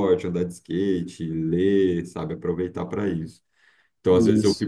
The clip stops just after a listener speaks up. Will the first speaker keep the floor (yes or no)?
yes